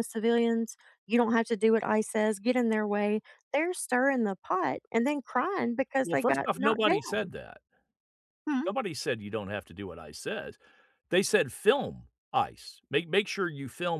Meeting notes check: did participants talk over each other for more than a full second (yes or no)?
yes